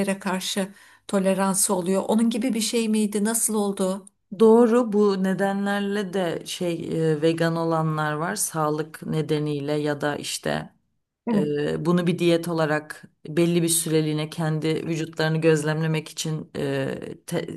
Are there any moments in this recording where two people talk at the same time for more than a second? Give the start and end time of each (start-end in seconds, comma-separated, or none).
none